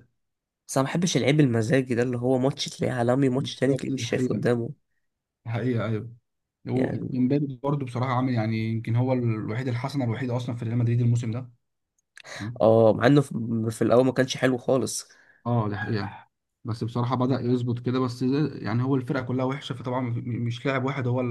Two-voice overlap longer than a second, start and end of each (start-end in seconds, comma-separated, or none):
3.4-4.6